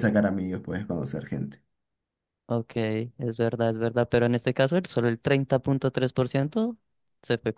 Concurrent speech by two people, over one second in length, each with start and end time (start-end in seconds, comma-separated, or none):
none